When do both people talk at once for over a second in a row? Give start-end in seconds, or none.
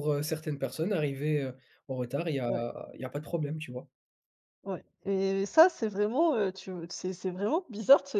none